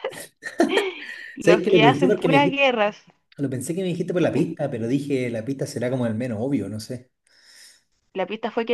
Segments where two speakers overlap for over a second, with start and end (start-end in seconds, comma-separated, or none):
1.4-2.6